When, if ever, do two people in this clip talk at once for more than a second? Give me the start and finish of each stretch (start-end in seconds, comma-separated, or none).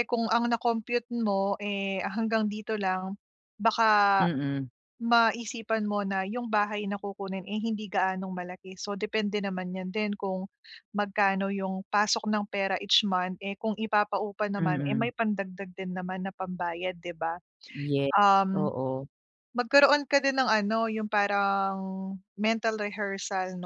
none